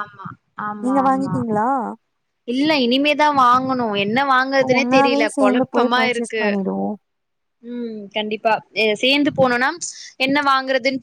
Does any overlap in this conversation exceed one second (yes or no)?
yes